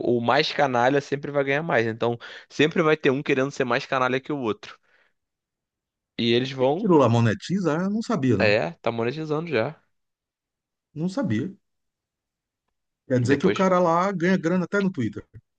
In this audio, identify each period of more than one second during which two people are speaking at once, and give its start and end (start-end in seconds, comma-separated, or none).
none